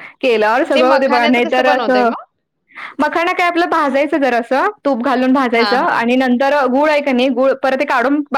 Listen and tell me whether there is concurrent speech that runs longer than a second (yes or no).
yes